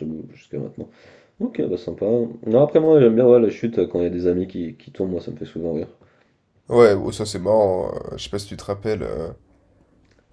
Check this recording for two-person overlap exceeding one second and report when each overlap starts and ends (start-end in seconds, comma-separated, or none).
none